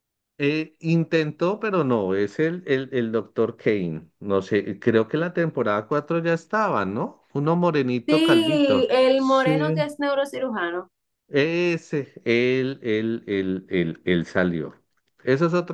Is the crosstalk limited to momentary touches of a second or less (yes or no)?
no